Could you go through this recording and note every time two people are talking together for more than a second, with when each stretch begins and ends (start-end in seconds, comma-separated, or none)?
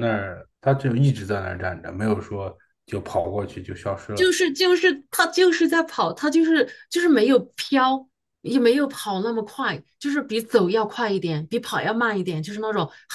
none